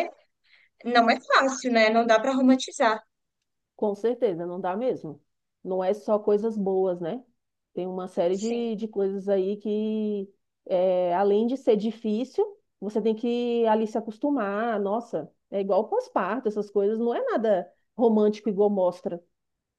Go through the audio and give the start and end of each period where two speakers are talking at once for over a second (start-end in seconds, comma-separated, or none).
none